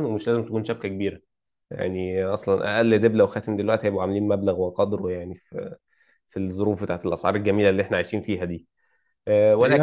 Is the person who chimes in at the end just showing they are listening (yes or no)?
yes